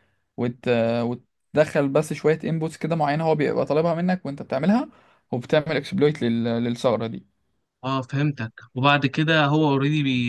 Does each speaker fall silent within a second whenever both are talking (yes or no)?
yes